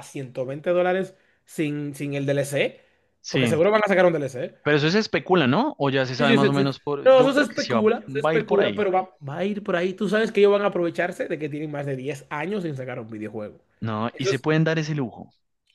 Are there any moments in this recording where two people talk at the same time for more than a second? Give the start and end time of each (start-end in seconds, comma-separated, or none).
6.2-8.9